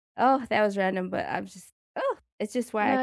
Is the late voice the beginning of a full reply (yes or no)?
no